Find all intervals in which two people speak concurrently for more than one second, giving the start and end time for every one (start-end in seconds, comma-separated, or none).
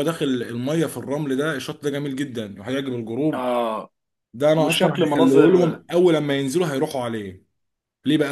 4.6-5.8